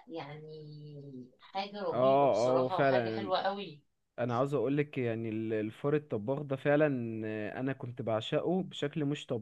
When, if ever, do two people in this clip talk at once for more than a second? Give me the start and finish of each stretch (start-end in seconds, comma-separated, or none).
1.9-3.3